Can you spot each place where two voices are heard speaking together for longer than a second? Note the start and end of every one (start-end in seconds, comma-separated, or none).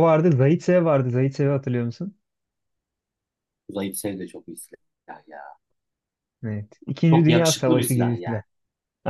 7.1-8.4